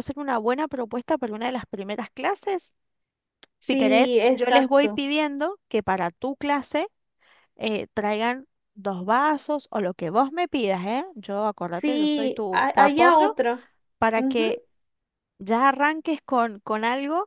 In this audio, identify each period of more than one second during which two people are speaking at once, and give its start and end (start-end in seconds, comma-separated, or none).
3.6-5.0, 11.7-13.4